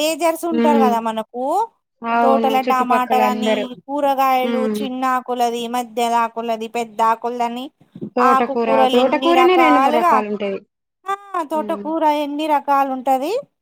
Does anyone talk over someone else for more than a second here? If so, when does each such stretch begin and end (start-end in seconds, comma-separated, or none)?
8.3-10.1